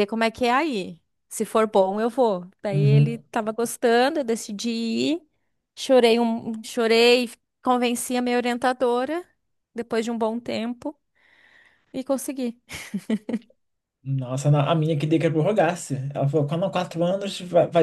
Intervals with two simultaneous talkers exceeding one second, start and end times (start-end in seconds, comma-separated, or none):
none